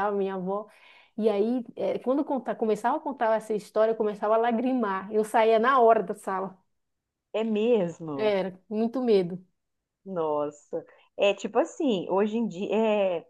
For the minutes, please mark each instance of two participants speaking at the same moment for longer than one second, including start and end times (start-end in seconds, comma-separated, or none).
none